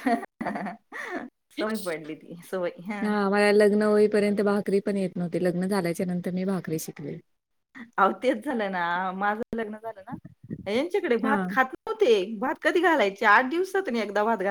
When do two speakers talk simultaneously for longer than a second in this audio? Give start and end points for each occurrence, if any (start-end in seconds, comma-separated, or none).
none